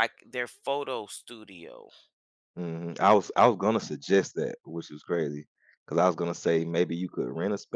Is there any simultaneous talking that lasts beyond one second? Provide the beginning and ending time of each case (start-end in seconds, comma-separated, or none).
none